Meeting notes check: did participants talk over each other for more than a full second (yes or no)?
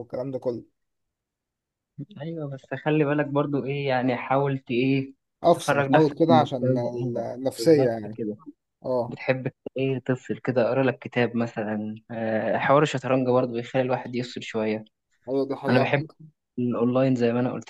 yes